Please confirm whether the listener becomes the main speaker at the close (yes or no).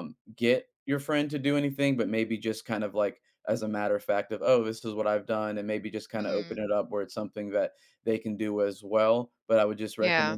no